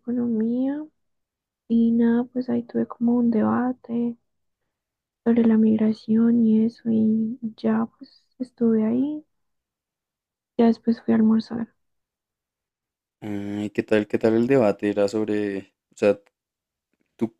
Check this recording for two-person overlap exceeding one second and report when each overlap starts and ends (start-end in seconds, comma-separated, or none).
none